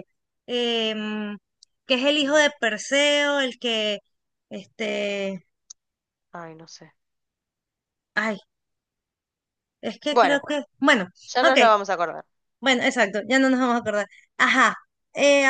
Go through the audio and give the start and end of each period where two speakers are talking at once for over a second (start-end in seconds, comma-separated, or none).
none